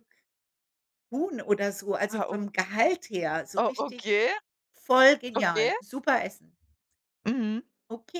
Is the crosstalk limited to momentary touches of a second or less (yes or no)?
yes